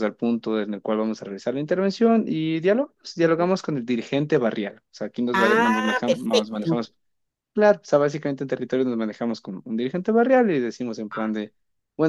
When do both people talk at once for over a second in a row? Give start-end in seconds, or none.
5.3-6.9